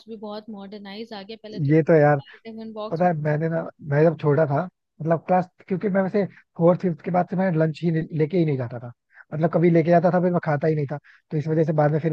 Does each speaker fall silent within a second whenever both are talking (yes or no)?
yes